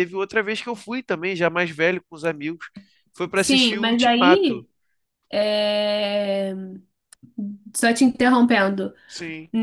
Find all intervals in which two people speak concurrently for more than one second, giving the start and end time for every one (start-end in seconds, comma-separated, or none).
3.3-4.7